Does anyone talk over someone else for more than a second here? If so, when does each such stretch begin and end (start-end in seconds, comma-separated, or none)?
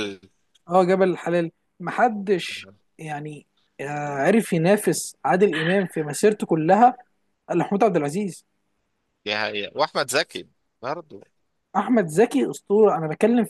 none